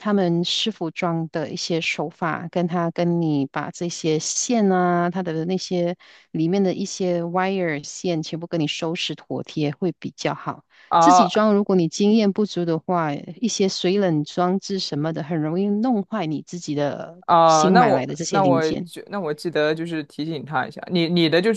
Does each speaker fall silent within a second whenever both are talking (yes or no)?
no